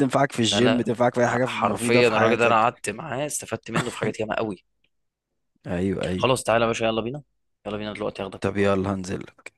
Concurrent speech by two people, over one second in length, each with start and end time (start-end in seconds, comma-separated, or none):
0.5-2.8